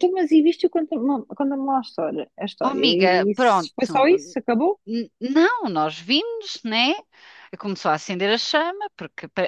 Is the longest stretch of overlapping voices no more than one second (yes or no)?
no